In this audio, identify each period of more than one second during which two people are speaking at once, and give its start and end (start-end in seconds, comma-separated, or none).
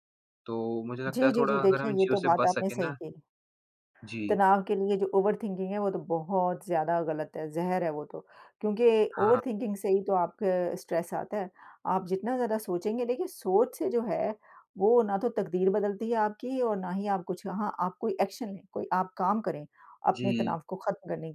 1.1-2.9